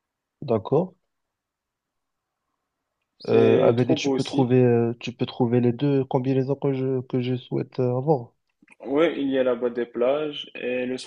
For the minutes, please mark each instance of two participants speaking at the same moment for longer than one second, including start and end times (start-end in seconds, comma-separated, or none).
3.3-4.5